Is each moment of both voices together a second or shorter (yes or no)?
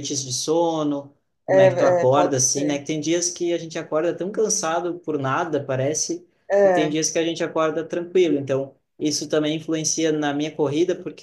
no